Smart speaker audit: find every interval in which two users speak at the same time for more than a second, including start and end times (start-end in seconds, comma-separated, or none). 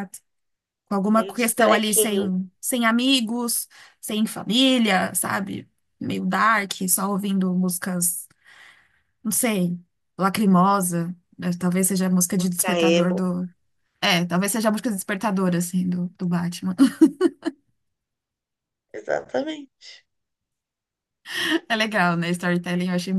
1.1-2.3